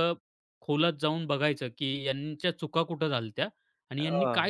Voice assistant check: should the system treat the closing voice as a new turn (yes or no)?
no